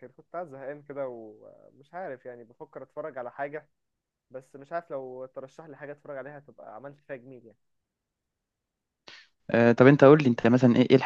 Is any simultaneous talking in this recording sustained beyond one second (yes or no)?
no